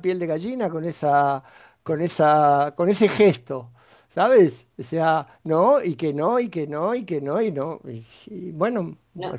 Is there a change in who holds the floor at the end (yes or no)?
yes